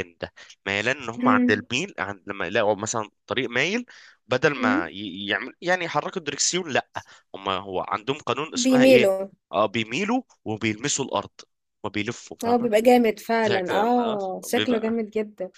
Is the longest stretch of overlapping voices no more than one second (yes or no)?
no